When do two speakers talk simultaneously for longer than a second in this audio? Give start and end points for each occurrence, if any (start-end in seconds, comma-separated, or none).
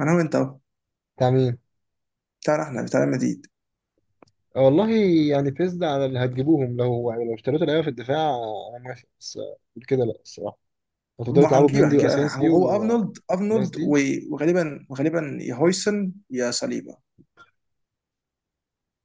11.3-12.6